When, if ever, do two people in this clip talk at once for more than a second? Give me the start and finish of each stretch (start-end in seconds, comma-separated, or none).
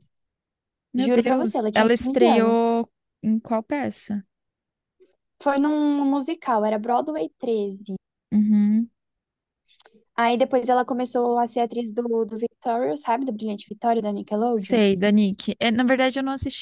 1.0-2.6